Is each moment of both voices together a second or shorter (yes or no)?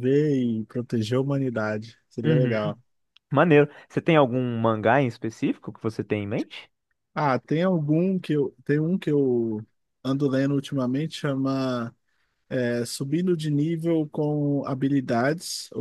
yes